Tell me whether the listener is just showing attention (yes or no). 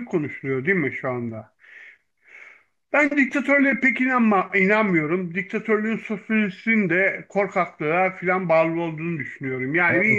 yes